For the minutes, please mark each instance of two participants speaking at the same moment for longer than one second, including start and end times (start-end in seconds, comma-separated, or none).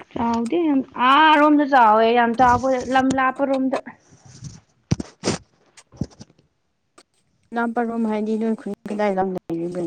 none